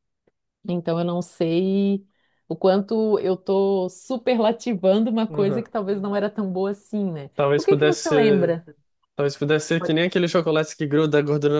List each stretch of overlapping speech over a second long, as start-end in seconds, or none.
7.3-8.6